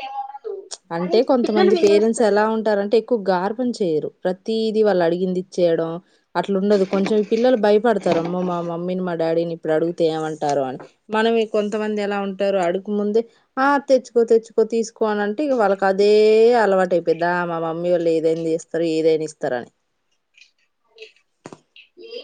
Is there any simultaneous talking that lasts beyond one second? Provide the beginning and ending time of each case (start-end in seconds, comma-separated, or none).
1.0-2.5